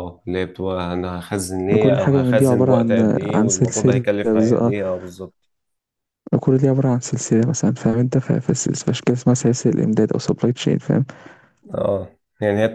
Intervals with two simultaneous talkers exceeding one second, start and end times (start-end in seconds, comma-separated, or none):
1.8-4.7